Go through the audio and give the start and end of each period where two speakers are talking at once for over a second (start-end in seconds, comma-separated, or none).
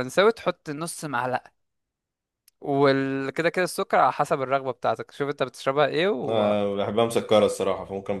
none